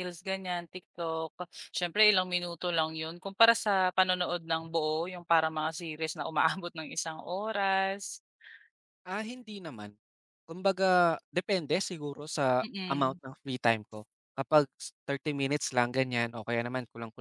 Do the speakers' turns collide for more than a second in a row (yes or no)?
no